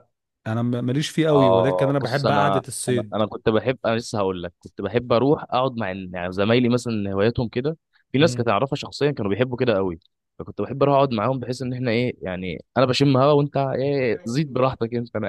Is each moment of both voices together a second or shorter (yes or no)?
no